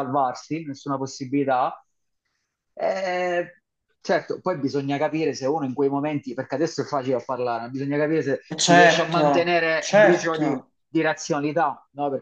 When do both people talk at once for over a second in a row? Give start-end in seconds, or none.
8.7-10.7